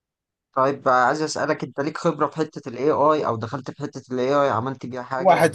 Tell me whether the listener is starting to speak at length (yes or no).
yes